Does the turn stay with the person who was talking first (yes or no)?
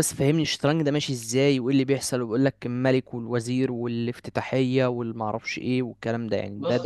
no